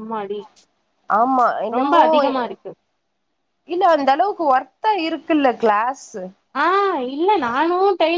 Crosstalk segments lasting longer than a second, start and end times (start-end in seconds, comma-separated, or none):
none